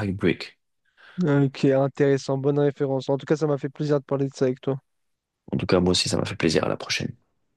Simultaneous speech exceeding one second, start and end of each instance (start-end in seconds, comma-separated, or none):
none